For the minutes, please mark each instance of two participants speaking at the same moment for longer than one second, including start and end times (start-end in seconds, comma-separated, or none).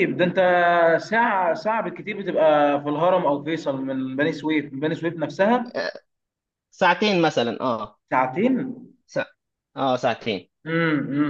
none